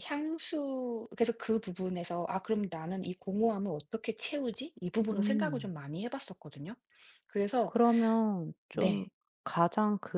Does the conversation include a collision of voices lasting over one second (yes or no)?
no